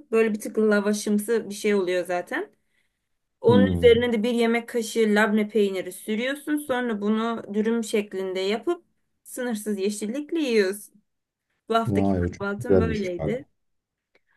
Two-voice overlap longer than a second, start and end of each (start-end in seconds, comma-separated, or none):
11.9-13.4